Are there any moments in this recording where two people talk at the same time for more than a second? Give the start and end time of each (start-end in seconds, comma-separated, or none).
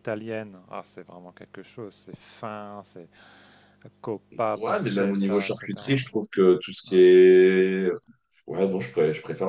4.5-6.0